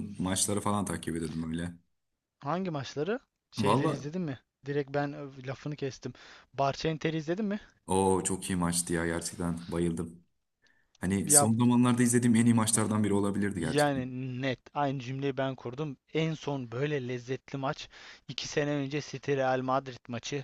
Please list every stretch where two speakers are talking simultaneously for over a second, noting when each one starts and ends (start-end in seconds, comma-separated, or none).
none